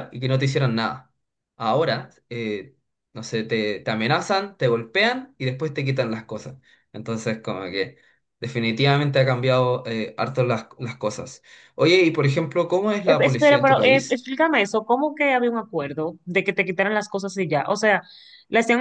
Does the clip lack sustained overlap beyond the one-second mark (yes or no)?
no